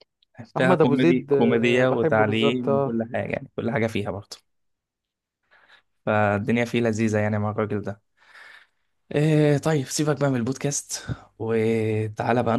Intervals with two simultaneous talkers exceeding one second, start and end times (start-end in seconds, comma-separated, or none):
0.6-3.0